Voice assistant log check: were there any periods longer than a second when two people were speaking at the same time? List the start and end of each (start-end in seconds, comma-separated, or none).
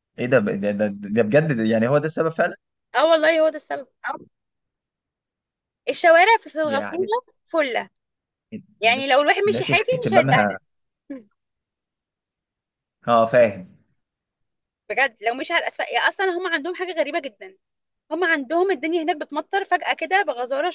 8.8-10.6